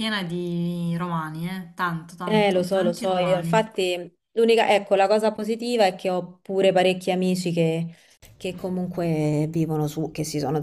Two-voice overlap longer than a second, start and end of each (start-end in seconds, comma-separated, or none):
2.2-3.6